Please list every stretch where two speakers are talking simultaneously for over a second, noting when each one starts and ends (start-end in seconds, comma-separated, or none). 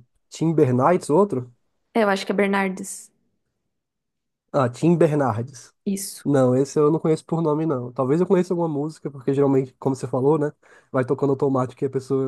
none